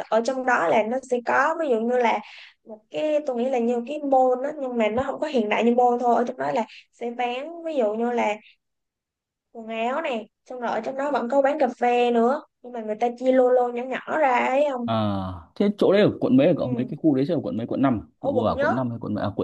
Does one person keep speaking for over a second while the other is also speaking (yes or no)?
no